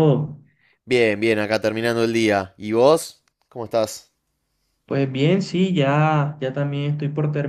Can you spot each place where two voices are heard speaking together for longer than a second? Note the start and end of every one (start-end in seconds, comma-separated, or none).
none